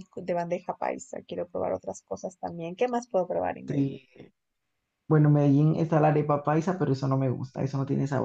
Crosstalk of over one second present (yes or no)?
no